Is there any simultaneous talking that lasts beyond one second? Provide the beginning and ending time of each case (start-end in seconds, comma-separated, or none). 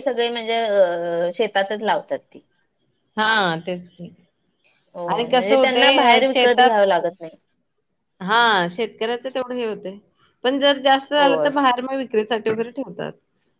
5.1-6.8